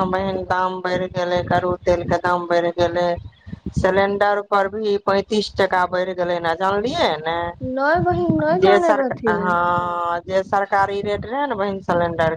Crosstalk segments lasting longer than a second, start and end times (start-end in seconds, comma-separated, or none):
none